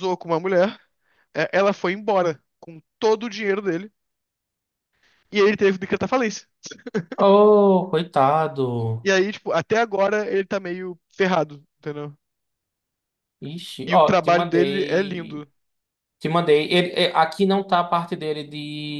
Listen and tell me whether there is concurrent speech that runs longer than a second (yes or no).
yes